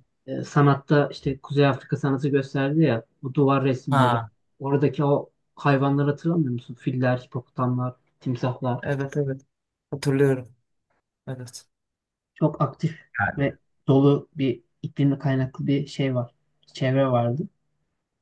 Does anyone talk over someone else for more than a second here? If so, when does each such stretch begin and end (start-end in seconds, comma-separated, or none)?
none